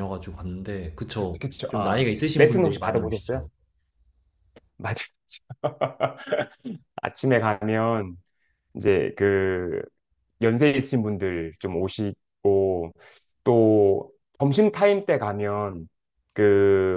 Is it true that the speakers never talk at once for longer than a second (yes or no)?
no